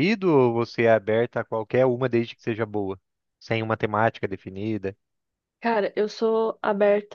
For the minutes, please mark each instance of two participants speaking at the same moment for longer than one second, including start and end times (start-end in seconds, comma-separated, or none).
none